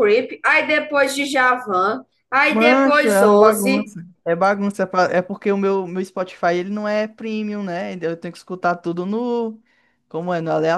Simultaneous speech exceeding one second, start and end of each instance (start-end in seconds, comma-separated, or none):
2.5-3.9